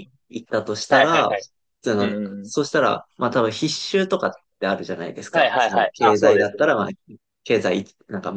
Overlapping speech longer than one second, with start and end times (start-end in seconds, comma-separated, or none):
5.3-6.7